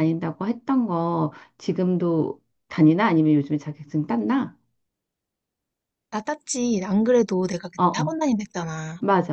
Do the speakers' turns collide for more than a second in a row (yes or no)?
no